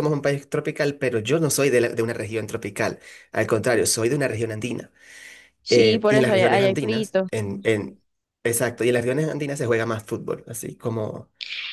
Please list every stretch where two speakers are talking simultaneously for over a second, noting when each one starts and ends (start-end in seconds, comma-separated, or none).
5.7-7.3